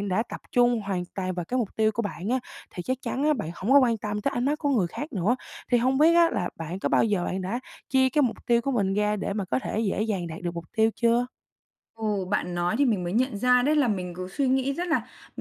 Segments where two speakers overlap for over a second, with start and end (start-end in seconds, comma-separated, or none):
none